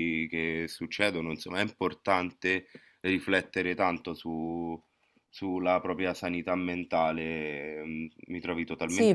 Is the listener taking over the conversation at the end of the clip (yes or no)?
yes